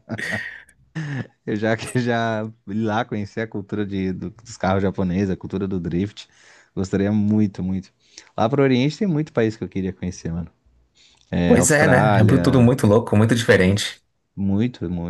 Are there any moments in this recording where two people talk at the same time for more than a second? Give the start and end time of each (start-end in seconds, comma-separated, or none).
11.4-12.7